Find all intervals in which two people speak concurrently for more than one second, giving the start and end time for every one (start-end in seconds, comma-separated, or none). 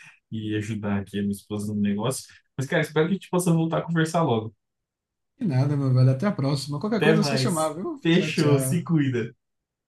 7.0-8.8